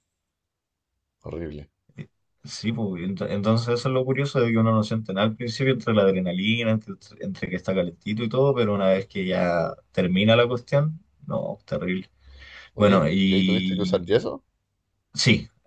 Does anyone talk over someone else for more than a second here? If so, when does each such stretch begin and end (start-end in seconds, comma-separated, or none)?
12.8-14.1